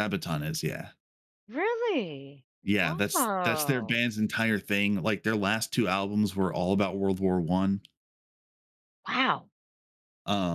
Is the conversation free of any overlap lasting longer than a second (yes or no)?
yes